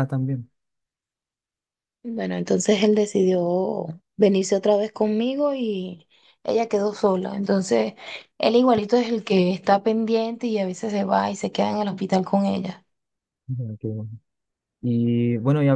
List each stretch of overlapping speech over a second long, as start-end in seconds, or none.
none